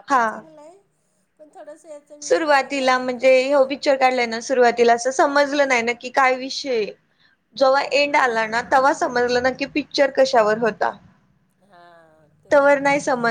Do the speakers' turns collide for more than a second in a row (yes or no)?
no